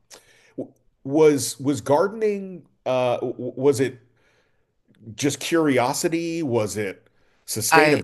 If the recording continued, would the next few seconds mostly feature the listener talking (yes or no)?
no